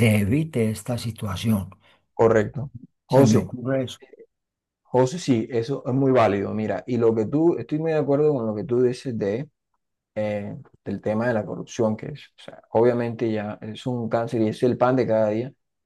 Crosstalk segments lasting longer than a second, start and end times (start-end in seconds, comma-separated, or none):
none